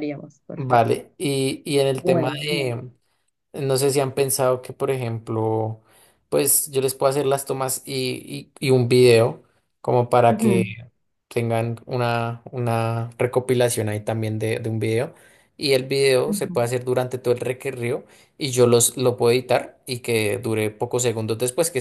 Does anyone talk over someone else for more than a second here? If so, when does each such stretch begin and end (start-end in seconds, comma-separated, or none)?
none